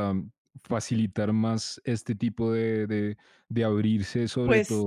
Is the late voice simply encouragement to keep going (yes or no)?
yes